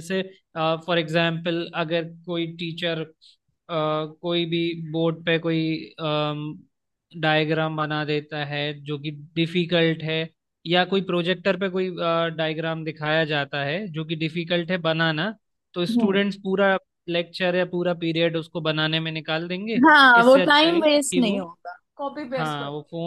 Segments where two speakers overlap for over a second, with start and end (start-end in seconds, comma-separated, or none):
20.2-21.4